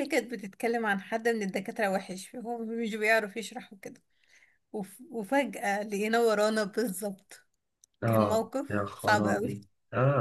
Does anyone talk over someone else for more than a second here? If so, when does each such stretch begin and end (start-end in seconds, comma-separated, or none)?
8.1-9.6